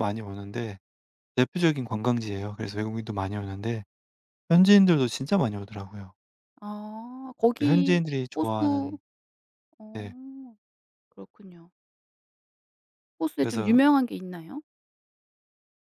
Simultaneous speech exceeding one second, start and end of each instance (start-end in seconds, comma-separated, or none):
7.6-9.0